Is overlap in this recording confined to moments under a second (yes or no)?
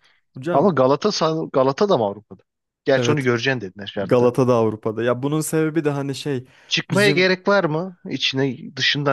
yes